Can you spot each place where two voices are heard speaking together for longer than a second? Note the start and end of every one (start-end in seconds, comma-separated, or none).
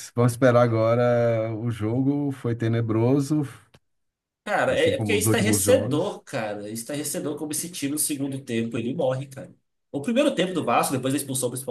4.7-6.2